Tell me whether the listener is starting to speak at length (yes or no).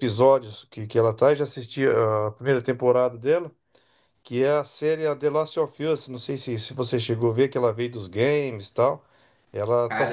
no